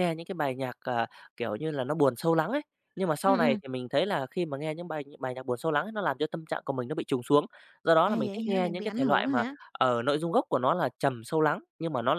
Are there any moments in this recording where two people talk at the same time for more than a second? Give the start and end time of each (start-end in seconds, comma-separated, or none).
8.0-9.6